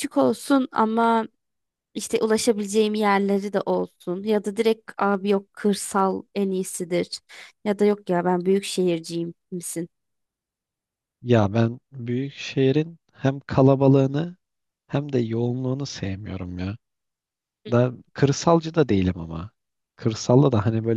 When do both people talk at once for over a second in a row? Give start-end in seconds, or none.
none